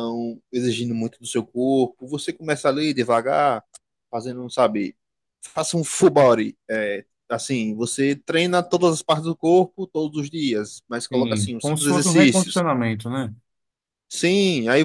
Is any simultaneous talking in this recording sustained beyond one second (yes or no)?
yes